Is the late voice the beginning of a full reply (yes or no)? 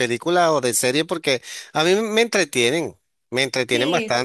no